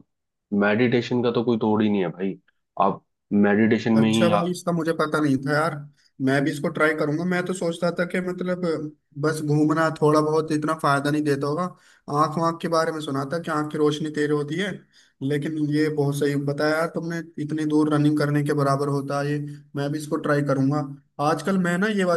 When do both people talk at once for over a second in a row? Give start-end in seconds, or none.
none